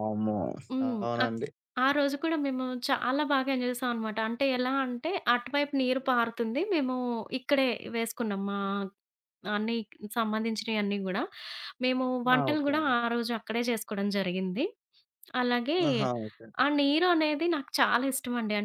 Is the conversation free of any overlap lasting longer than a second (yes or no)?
yes